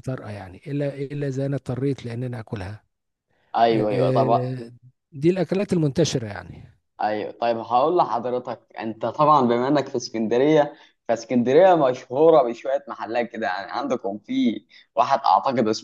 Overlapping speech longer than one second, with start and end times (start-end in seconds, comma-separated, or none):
none